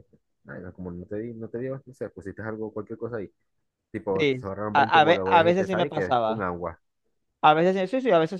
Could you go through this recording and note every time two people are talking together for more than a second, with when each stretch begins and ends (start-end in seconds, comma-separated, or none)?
4.2-6.5